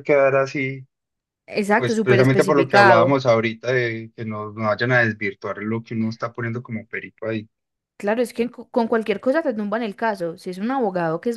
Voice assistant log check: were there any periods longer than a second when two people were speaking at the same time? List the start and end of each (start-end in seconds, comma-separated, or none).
1.8-3.0